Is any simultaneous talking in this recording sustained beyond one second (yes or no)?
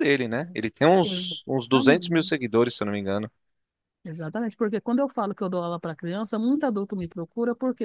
yes